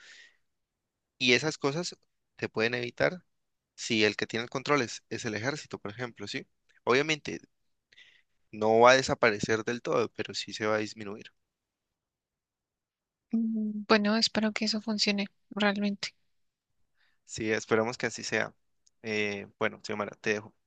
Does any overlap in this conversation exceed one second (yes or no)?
no